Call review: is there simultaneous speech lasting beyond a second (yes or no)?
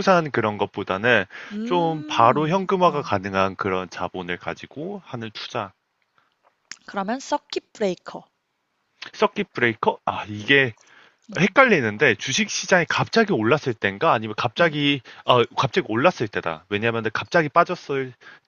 yes